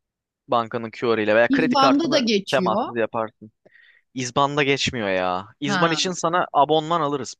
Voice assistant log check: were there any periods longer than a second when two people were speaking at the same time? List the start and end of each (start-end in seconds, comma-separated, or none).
1.5-2.8